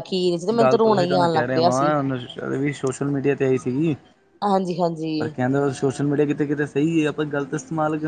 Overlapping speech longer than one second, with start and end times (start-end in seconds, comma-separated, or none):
0.6-1.9